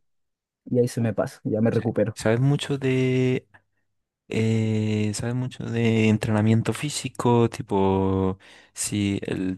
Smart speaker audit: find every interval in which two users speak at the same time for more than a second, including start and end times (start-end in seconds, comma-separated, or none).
none